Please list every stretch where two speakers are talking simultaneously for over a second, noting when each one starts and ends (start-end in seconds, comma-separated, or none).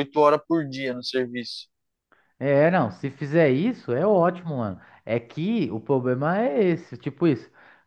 none